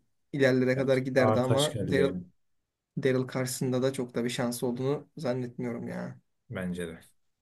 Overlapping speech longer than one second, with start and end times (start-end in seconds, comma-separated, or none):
0.8-2.1